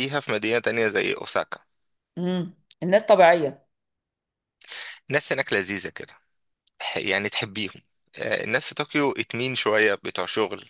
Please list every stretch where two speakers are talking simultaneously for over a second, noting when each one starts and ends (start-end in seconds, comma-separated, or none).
none